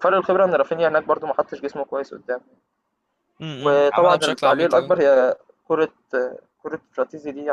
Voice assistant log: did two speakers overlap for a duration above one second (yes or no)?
yes